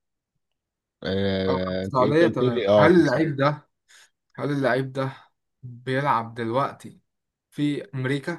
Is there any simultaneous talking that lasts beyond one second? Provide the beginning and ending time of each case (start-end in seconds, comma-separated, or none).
1.5-3.3